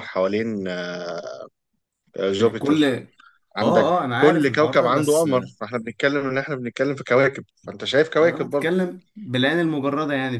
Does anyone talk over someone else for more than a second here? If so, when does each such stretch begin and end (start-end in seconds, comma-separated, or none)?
4.0-5.3